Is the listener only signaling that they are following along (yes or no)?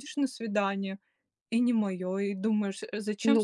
no